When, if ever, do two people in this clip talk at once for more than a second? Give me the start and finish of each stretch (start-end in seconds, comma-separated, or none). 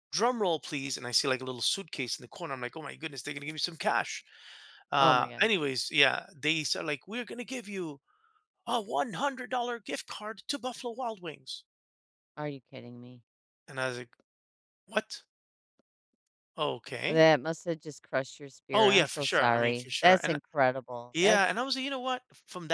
18.7-20.4